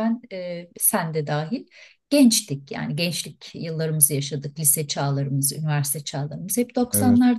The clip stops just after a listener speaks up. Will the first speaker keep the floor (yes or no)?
yes